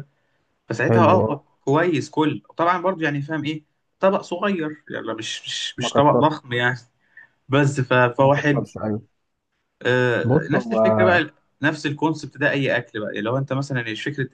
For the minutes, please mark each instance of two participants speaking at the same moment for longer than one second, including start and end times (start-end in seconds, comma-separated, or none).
none